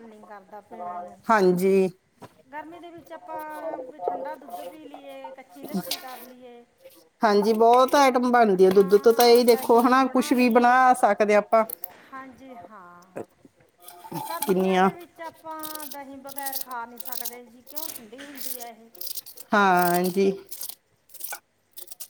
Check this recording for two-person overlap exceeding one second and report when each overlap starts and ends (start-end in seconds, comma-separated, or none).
8.7-10.8